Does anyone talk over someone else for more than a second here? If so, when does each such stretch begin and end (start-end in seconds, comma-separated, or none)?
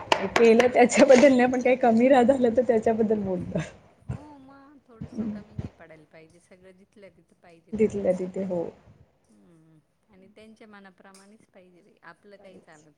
0.5-2.1